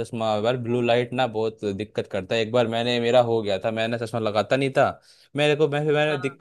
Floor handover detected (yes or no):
no